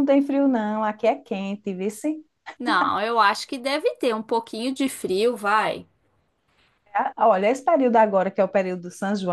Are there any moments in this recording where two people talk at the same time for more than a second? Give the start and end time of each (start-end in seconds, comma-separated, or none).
none